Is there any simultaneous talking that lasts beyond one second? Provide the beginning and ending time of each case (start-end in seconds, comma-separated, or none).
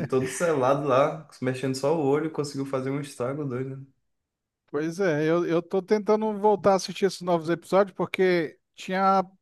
none